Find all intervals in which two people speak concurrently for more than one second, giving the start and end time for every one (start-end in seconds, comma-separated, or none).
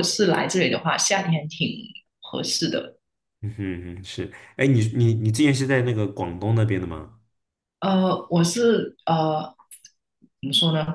none